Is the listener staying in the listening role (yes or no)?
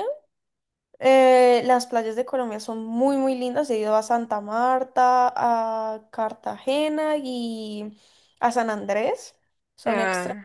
yes